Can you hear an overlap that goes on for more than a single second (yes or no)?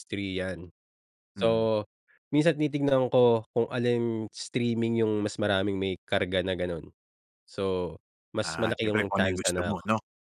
yes